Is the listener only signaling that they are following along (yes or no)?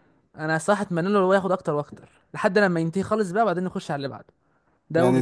no